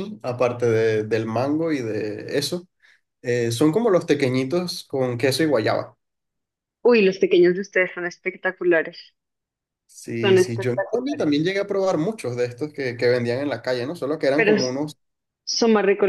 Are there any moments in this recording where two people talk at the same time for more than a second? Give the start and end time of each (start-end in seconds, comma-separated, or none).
10.2-11.4